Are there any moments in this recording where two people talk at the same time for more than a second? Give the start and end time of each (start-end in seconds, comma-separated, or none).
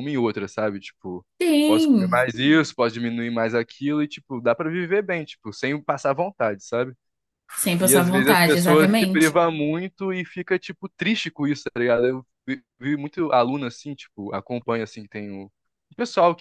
7.8-9.4